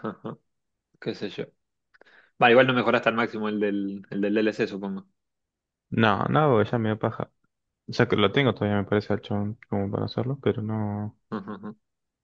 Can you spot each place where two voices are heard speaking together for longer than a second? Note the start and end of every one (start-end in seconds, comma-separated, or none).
none